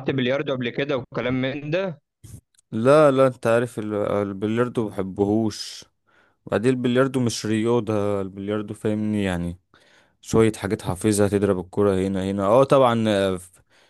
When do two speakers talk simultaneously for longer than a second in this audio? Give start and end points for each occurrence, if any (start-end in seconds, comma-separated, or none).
none